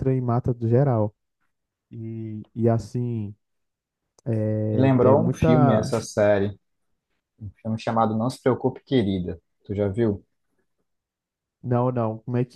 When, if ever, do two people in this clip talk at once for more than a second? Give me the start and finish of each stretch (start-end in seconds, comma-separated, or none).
4.7-5.9